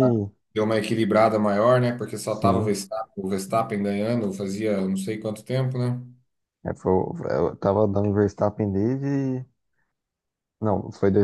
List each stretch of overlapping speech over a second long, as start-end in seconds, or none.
none